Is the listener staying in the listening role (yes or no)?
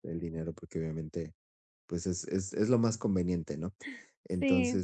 yes